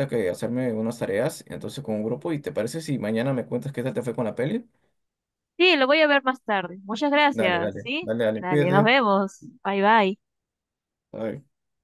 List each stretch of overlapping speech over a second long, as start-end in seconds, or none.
7.3-8.9